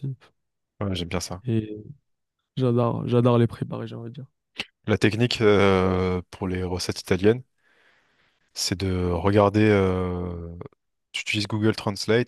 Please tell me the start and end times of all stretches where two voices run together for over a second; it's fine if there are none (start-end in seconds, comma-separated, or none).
none